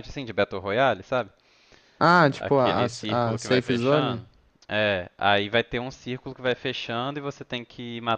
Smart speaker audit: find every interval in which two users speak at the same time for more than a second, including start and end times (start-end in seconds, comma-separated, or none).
2.4-4.2